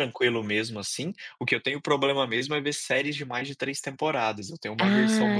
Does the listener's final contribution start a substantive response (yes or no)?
yes